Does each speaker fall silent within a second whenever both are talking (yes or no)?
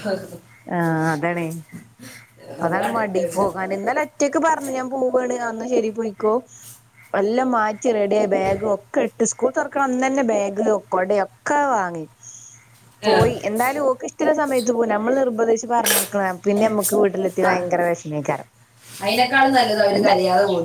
yes